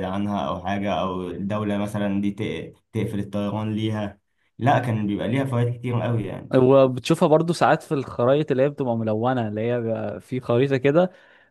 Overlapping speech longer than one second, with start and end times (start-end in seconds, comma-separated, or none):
none